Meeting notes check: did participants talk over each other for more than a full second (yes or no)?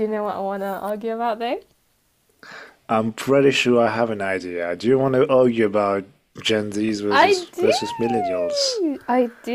no